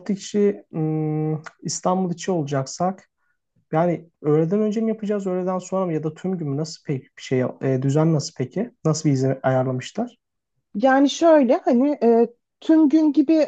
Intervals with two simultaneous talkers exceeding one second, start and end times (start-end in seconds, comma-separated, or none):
none